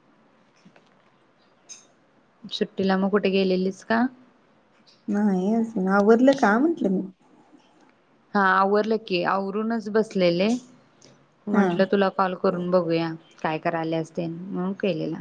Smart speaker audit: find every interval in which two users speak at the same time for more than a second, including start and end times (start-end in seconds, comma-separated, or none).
none